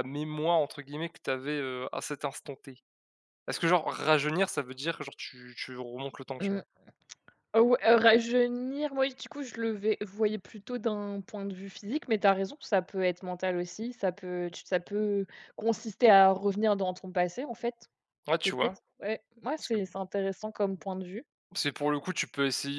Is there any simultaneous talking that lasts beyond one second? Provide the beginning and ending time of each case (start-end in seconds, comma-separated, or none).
none